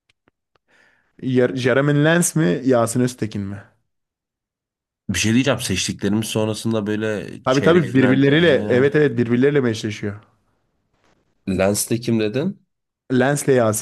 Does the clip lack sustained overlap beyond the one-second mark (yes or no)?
no